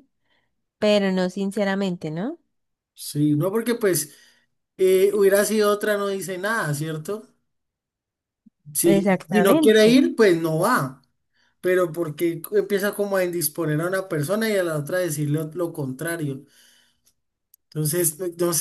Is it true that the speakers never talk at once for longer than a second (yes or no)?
no